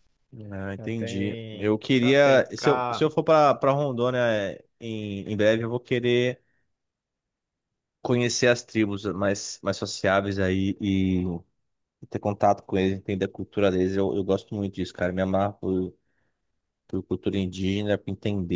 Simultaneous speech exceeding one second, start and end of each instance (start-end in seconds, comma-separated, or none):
0.8-3.1